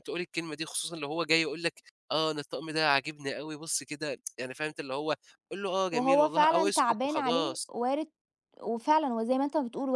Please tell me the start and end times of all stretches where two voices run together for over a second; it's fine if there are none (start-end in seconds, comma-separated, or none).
5.9-7.6